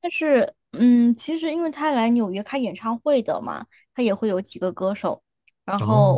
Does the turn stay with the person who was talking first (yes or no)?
yes